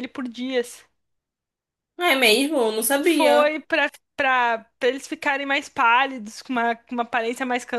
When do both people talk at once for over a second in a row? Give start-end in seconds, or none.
none